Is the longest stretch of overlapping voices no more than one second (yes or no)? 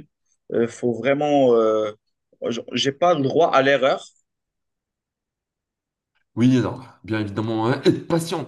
yes